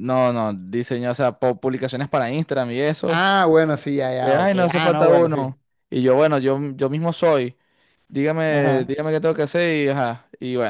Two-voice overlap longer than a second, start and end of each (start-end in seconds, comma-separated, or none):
4.2-5.5